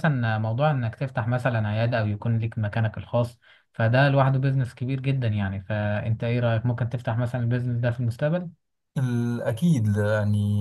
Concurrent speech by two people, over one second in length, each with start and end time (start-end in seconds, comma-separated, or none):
none